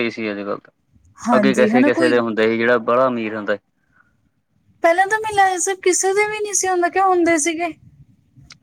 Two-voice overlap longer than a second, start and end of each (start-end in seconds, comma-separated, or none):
none